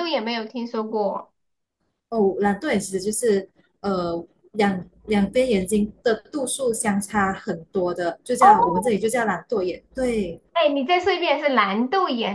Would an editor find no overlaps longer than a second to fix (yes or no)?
yes